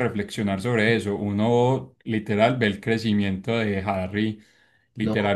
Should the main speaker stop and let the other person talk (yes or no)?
no